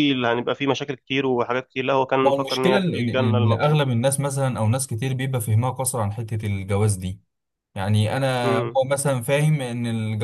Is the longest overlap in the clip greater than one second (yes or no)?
yes